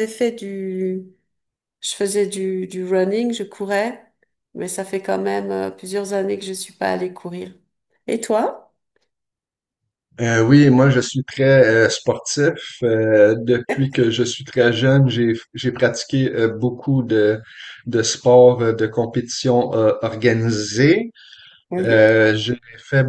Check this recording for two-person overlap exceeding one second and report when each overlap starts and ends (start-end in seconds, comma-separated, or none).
none